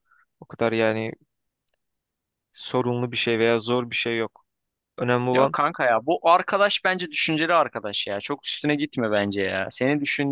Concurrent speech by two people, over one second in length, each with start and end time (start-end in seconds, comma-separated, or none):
none